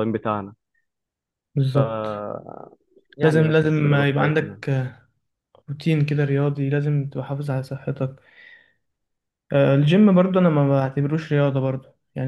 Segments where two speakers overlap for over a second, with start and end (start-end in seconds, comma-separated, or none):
3.2-4.6